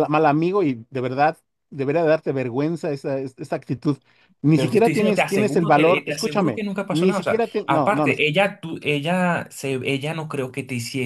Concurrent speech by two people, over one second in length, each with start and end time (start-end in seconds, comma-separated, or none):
4.5-8.1